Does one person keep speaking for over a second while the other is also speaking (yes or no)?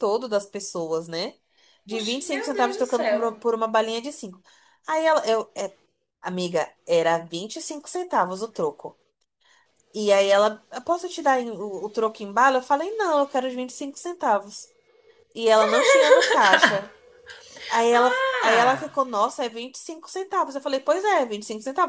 yes